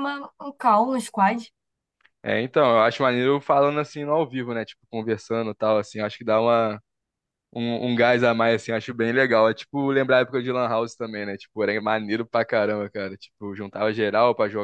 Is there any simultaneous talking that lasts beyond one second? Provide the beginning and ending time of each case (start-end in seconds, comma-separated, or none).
none